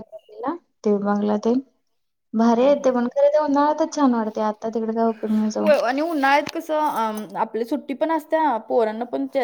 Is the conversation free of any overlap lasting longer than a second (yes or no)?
yes